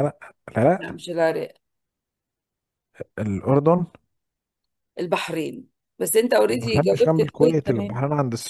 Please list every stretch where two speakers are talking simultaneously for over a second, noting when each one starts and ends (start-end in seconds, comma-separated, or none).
6.5-8.0